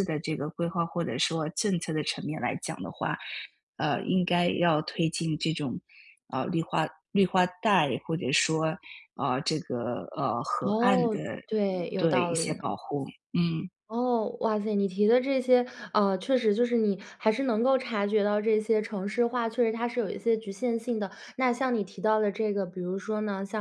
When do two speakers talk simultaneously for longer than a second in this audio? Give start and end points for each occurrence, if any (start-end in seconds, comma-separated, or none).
10.6-12.7